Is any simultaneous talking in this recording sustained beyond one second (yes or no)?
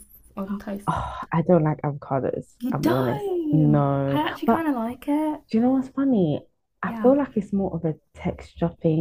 yes